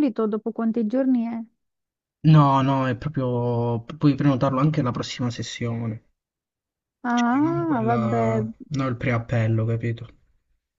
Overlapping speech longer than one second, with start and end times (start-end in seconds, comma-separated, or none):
7.1-8.4